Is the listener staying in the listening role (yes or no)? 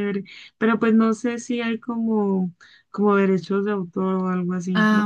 no